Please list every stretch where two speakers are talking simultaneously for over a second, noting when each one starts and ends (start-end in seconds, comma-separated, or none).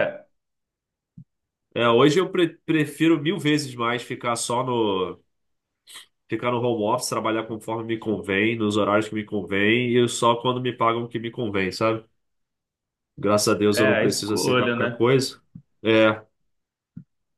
13.7-15.1